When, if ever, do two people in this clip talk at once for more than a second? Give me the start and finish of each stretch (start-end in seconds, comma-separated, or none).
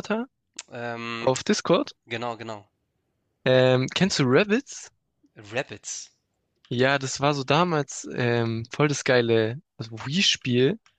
none